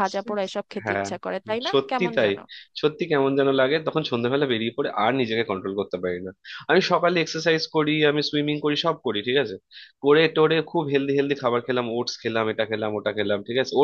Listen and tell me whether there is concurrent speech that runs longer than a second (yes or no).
no